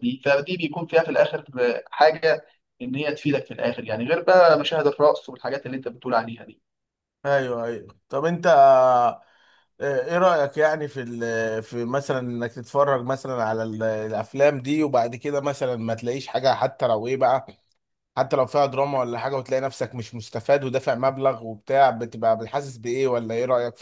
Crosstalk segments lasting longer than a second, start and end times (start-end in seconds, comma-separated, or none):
none